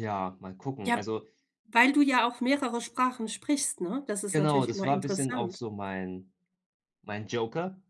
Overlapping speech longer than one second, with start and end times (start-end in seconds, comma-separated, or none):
4.3-5.6